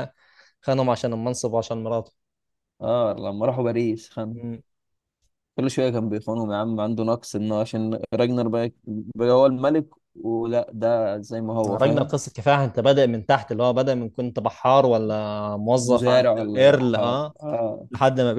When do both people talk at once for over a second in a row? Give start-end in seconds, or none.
15.8-17.3